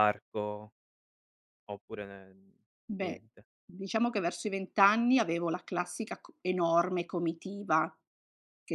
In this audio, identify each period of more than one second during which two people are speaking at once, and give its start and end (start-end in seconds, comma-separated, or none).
none